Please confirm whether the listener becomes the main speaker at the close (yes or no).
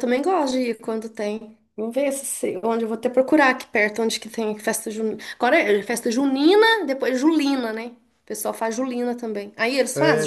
yes